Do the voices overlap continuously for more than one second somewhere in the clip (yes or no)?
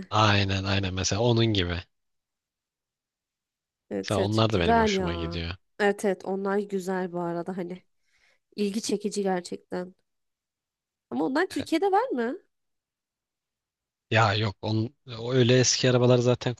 yes